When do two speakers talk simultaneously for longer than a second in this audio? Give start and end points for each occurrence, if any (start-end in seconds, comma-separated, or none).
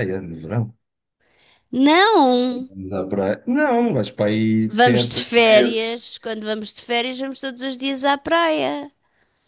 4.7-6.1